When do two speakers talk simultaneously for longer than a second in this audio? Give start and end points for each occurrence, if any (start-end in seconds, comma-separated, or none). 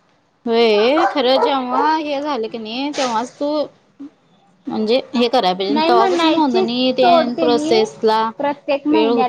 5.7-7.8